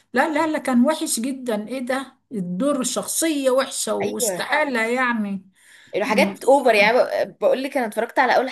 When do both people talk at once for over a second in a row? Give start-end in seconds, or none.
none